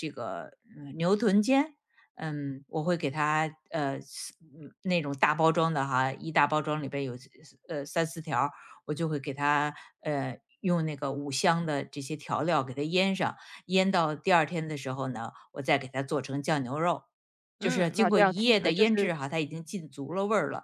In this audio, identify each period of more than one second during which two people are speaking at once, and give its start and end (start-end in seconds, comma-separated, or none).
17.6-19.1